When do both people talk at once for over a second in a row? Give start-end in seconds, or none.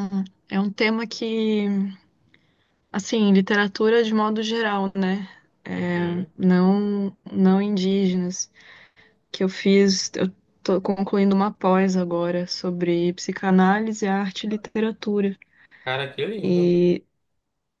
none